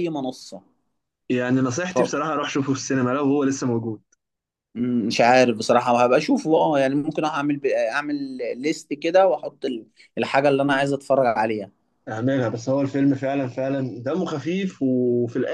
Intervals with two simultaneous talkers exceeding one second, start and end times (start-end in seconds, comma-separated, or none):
none